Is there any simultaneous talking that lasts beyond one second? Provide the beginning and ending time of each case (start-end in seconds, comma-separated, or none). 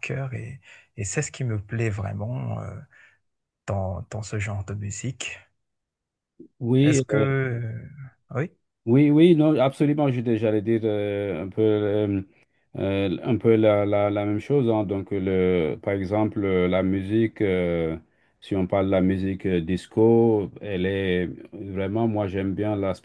none